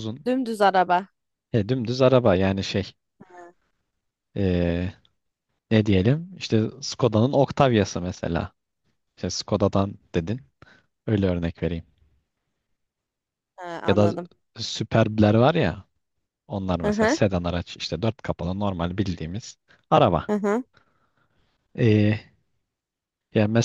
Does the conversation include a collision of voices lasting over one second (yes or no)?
no